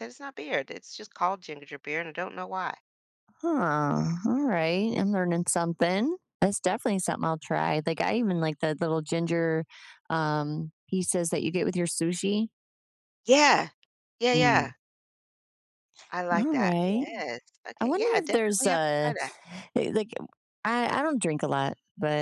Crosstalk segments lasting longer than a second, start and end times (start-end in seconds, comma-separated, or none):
17.8-19.1